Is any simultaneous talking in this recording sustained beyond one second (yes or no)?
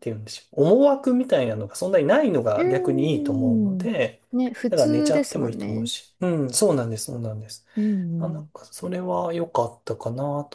yes